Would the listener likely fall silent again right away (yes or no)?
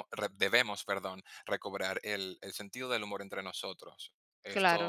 no